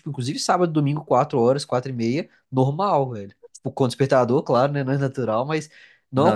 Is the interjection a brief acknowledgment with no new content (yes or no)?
yes